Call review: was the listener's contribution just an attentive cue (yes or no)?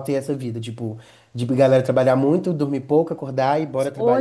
no